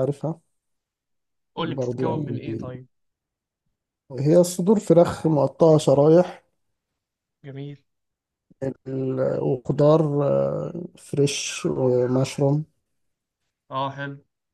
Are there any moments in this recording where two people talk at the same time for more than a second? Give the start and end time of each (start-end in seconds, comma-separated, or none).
1.6-2.8